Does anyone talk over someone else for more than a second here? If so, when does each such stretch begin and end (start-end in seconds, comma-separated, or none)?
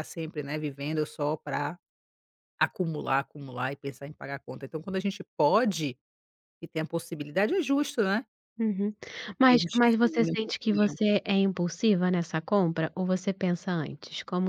9.5-11.0